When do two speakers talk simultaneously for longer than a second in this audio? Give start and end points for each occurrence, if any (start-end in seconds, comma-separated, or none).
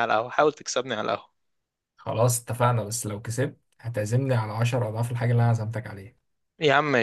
none